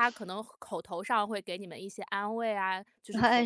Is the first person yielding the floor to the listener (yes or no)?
no